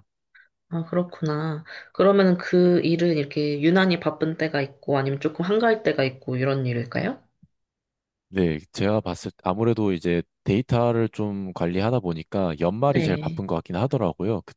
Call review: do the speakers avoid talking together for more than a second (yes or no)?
yes